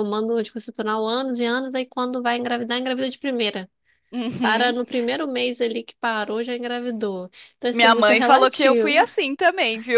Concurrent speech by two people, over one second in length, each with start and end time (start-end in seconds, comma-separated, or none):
7.7-9.1